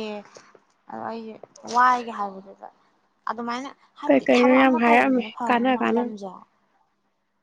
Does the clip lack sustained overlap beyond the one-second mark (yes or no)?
no